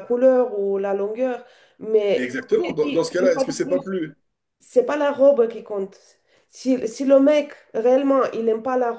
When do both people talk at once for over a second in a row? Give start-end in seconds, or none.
2.1-3.9